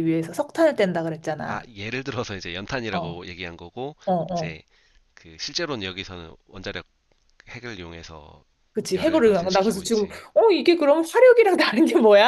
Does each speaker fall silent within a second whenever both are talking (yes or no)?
no